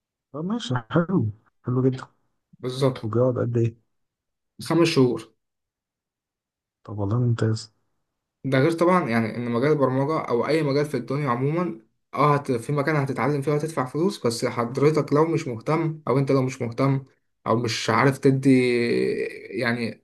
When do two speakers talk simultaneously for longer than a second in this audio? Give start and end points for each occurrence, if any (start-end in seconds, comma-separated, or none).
none